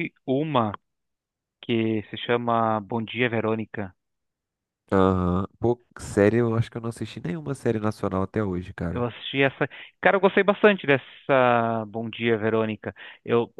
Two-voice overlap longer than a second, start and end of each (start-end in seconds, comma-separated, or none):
none